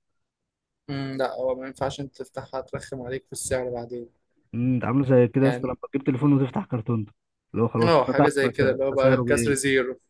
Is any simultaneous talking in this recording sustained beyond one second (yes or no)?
yes